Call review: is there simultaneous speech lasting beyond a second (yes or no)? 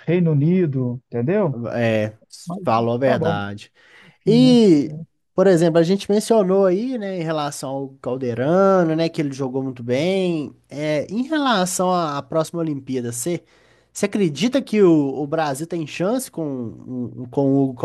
no